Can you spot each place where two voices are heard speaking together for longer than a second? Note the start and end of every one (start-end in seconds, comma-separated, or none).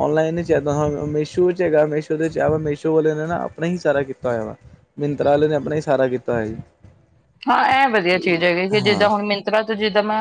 none